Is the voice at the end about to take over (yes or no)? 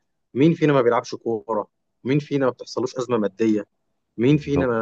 no